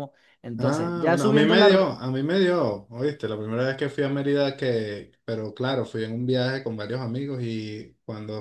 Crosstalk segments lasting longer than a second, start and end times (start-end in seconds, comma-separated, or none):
0.6-1.9